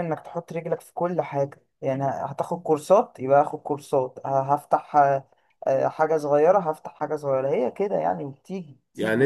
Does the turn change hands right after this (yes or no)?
yes